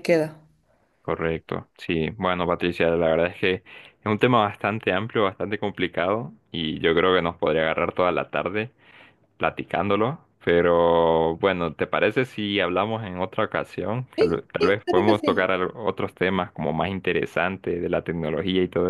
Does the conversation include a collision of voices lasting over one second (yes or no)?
yes